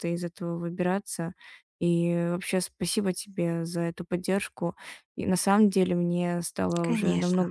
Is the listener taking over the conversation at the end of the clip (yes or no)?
no